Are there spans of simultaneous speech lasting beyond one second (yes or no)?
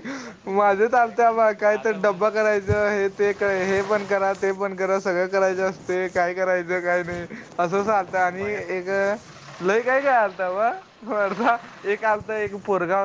yes